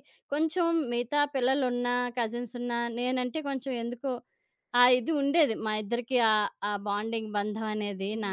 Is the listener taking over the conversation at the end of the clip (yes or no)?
yes